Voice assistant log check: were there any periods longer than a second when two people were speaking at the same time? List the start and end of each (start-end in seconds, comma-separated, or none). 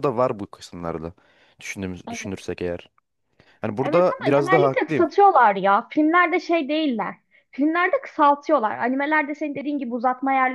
3.8-5.1